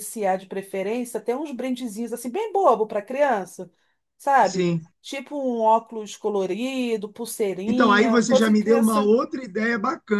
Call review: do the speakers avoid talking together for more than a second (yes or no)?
no